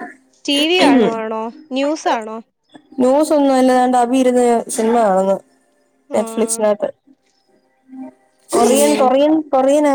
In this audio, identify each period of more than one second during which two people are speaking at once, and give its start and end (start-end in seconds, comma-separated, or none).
none